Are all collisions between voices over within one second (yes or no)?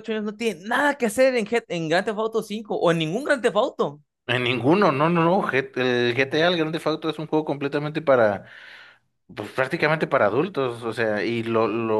yes